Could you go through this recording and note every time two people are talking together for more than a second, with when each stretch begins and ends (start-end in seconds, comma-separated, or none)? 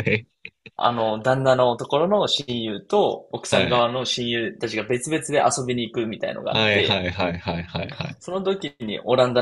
none